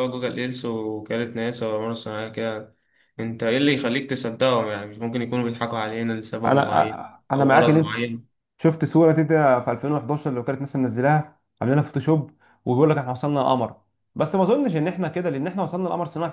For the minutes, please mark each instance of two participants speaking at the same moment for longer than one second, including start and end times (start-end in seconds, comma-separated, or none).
6.4-8.0